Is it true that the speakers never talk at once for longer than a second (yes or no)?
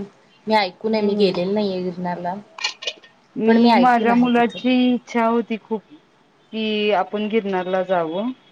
yes